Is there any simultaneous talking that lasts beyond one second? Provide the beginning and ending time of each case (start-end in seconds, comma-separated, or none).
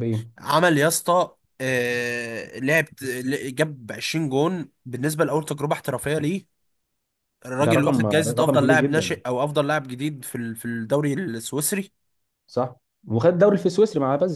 7.6-9.2